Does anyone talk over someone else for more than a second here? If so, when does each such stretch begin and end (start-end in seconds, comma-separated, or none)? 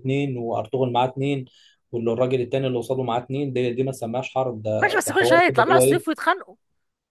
4.8-6.2